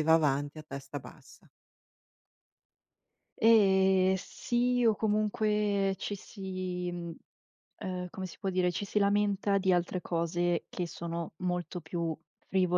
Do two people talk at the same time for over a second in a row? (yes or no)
no